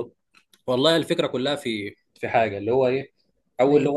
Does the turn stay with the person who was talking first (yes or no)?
yes